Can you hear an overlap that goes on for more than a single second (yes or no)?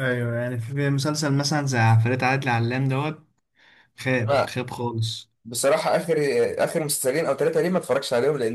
no